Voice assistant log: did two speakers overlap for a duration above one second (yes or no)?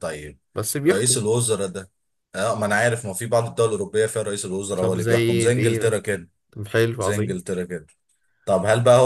yes